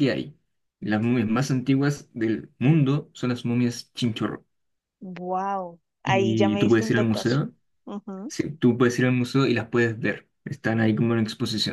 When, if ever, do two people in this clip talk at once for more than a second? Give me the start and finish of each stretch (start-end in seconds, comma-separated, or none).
6.0-7.4